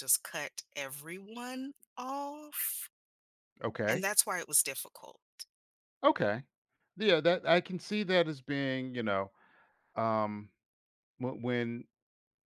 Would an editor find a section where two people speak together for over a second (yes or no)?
no